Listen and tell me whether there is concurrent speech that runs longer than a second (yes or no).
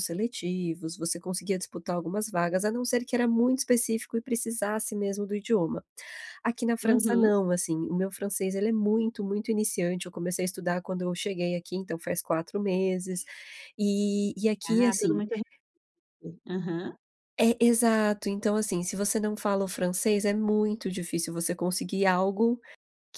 no